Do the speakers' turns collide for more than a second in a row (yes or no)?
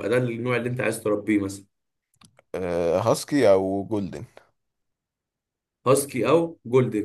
no